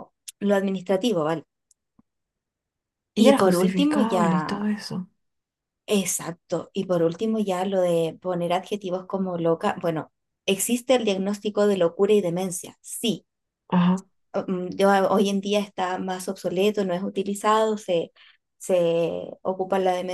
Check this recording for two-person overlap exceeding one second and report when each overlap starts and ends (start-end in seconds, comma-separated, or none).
3.1-4.7